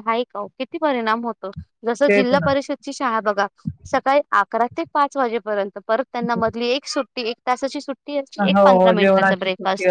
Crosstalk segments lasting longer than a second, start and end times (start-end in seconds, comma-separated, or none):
none